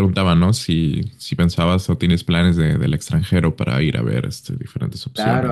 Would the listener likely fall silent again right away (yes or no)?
no